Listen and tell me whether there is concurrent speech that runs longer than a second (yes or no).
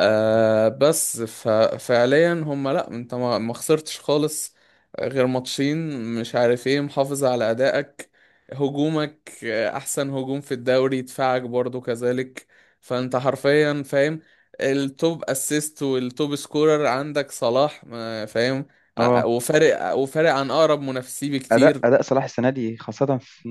no